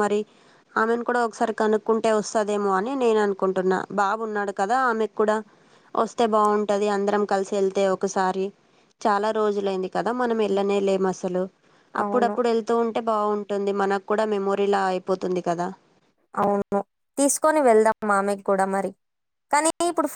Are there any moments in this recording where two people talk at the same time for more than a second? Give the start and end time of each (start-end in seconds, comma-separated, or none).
none